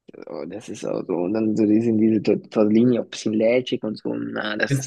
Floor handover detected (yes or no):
yes